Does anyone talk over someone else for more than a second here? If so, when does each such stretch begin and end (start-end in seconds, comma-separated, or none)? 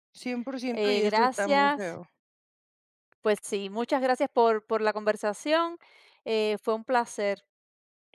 0.7-2.0